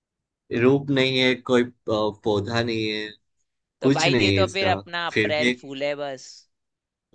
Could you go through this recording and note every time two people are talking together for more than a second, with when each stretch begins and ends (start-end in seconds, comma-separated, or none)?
3.8-5.5